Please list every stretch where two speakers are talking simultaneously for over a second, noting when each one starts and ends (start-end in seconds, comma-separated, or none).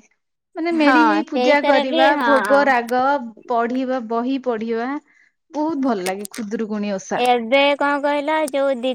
0.9-2.6